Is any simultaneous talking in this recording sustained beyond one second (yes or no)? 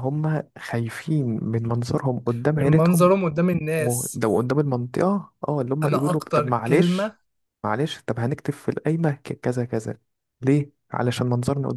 yes